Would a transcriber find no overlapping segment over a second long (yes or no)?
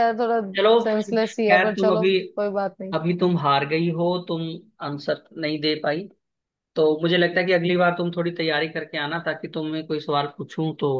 no